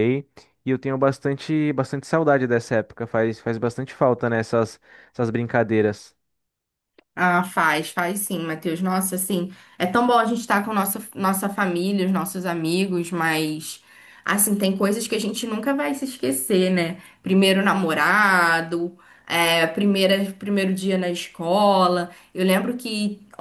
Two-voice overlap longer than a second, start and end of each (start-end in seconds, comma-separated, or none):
none